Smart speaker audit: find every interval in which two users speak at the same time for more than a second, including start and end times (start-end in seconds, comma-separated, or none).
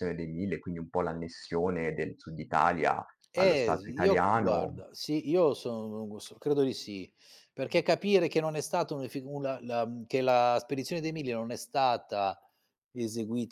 3.4-4.8